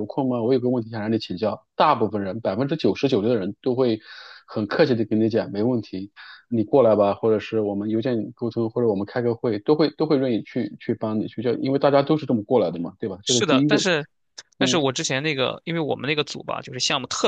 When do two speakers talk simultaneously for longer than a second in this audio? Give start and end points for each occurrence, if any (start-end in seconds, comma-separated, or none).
none